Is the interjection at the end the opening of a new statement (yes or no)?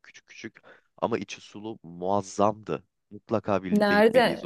yes